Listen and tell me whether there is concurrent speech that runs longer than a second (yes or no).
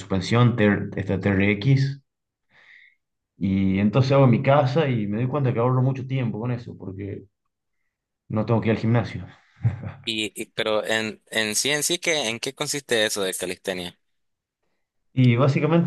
no